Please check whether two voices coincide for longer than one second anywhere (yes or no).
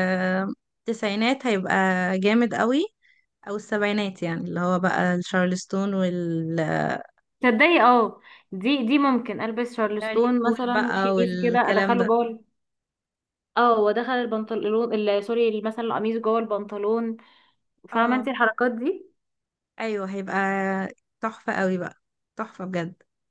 yes